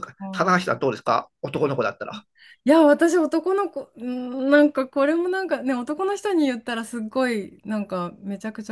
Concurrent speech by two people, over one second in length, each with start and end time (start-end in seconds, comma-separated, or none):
none